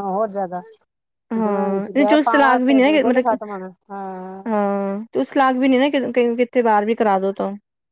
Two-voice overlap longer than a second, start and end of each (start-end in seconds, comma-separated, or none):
1.4-3.4